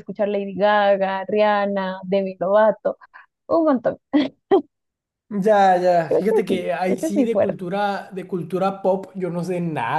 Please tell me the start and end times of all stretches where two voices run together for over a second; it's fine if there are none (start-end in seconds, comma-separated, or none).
6.1-7.6